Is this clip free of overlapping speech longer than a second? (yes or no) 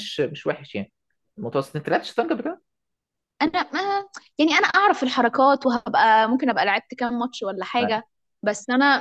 yes